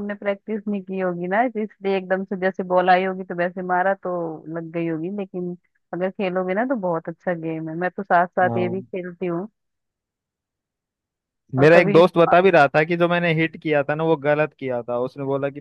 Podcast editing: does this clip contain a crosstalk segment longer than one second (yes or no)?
no